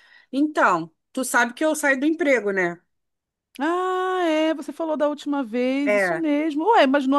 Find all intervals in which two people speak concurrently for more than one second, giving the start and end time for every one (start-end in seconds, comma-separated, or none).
none